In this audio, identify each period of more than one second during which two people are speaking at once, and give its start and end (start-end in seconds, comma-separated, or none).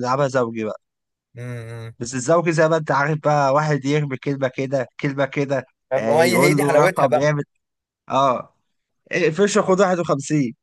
5.9-7.3